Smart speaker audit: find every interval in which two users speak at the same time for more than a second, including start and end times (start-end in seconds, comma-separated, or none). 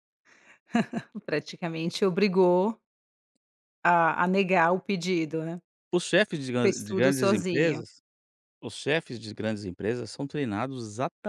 6.6-7.8